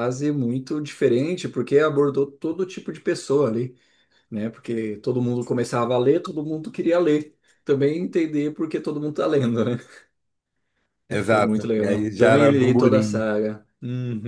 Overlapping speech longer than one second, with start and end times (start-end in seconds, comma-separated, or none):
11.1-13.3